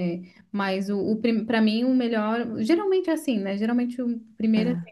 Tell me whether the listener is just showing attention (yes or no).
yes